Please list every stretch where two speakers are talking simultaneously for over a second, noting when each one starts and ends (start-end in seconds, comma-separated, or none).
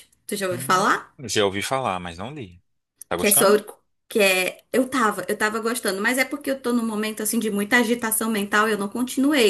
none